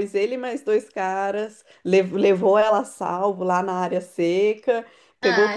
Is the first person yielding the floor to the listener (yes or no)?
no